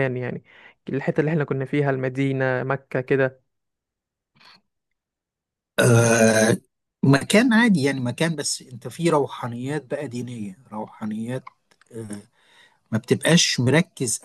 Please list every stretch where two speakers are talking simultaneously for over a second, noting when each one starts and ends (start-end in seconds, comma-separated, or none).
none